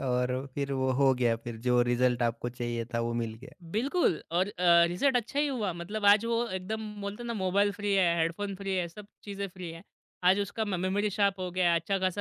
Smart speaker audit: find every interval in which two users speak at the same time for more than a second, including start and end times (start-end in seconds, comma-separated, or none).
none